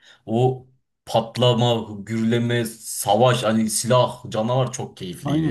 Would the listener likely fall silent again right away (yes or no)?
no